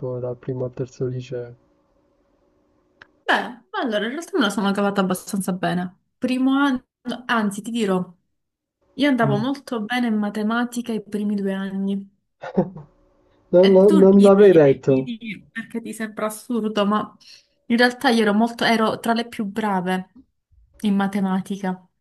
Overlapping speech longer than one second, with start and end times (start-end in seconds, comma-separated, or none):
13.6-15.1